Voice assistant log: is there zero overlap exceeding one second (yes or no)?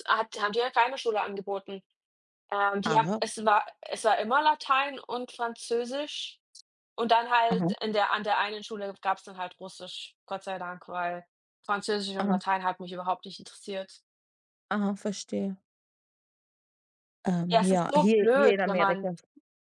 no